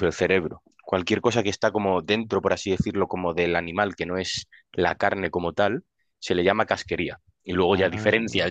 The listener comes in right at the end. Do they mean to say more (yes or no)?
no